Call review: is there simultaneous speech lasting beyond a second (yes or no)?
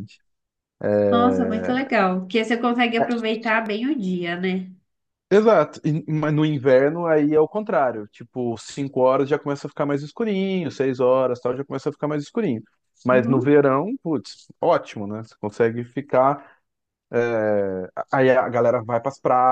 no